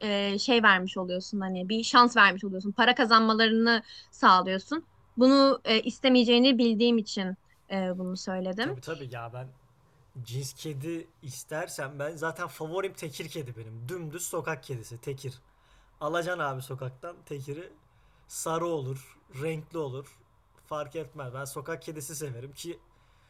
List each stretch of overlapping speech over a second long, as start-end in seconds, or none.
none